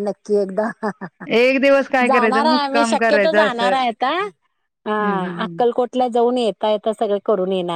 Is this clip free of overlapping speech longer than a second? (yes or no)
no